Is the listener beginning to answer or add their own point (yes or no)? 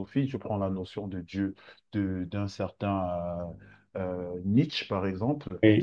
no